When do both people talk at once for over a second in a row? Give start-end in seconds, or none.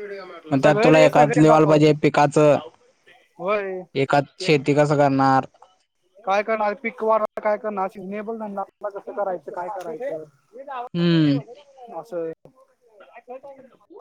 0.6-1.9